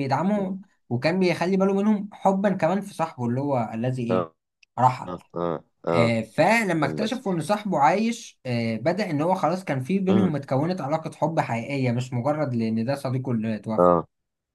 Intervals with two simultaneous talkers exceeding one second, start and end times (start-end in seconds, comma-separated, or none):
none